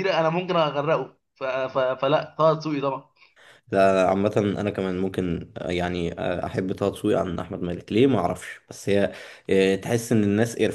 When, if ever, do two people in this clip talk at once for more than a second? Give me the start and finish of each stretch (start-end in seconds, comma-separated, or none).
none